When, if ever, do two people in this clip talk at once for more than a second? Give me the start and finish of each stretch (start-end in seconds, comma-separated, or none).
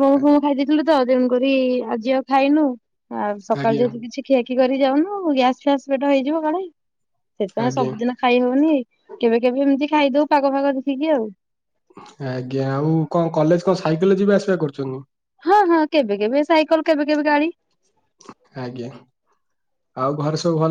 none